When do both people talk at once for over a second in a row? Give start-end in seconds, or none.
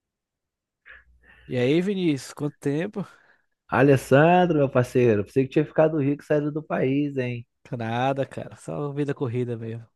none